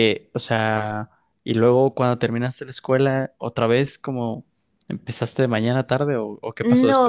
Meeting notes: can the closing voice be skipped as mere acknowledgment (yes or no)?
no